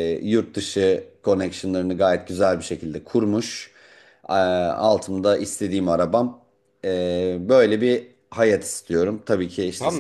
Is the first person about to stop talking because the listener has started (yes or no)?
yes